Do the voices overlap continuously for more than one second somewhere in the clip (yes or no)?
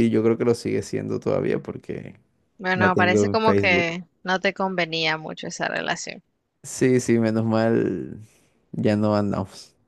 yes